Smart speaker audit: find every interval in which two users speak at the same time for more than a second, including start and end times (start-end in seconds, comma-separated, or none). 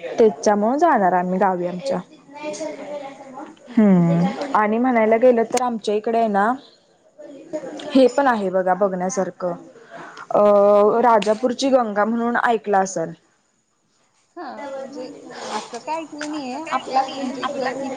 none